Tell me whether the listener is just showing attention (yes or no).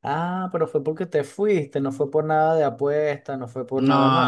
no